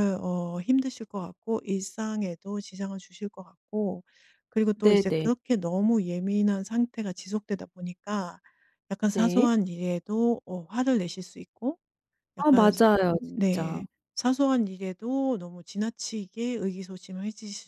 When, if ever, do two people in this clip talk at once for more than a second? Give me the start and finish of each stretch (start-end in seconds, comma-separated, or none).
12.4-13.8